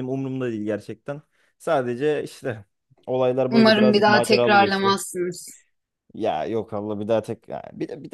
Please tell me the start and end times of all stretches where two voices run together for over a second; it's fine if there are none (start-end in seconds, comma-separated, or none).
3.5-5.0